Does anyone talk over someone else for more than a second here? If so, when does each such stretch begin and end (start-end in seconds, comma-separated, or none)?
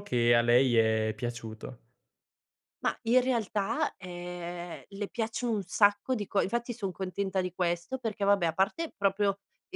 none